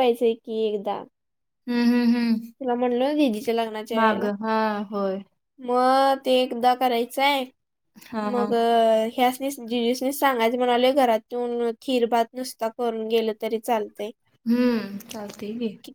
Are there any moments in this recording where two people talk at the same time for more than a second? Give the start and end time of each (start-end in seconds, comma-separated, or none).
none